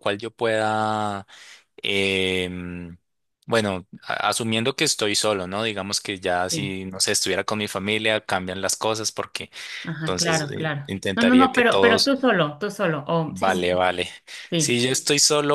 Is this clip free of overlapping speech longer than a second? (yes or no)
no